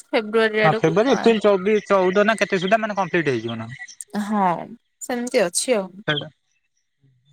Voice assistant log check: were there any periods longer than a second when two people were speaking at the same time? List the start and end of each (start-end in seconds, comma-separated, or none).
none